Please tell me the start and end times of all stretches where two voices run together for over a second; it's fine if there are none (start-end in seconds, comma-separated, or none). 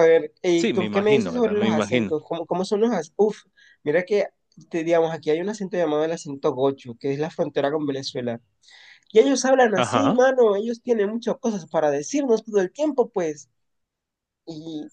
0.6-2.1